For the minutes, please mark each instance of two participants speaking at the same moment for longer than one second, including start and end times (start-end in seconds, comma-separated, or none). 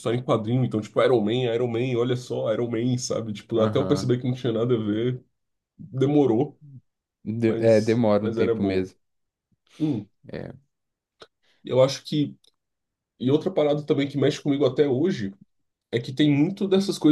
7.5-8.9